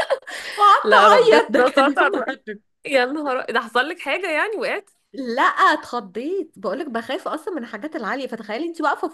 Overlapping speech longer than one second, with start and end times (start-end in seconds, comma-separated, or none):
0.8-2.2